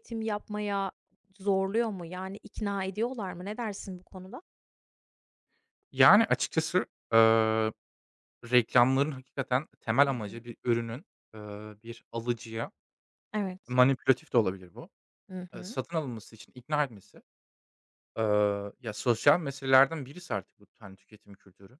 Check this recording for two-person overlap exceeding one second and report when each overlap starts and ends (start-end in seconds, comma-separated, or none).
none